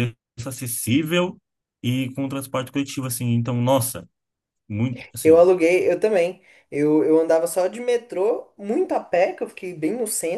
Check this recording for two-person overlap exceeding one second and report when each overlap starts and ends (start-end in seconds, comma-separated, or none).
none